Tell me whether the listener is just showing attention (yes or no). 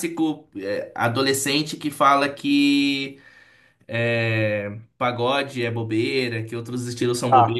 yes